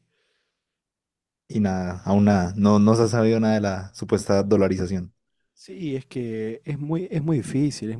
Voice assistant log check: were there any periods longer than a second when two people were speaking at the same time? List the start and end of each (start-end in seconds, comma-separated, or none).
none